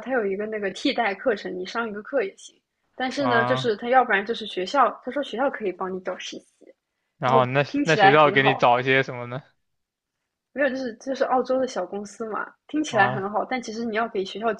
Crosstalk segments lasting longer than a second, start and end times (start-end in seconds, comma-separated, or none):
7.2-8.7